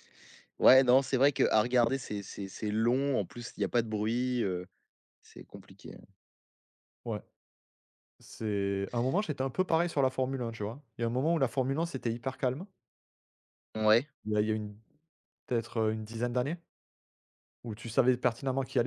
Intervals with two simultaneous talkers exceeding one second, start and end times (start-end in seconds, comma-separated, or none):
none